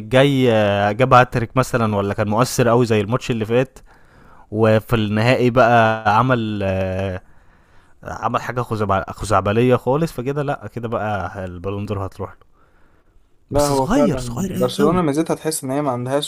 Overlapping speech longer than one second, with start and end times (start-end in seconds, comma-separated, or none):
13.5-15.0